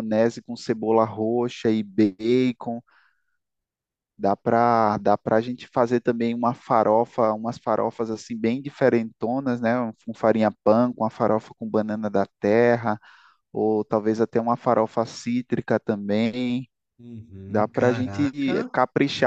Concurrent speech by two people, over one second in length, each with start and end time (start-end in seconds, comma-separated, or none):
17.5-18.7